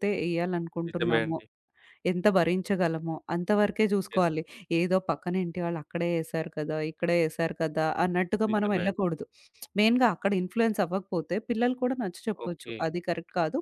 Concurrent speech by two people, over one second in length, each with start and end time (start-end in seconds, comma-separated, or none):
none